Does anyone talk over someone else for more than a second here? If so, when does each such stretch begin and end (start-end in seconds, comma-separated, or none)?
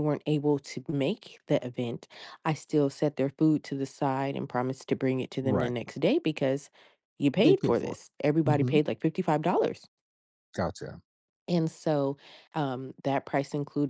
7.4-8.8